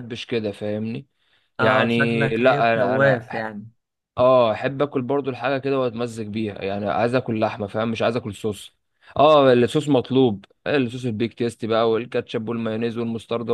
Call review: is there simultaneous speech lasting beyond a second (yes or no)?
yes